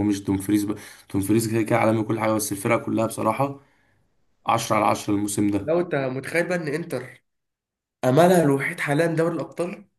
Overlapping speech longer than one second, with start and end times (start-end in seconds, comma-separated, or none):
none